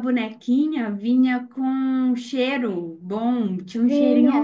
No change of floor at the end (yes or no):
yes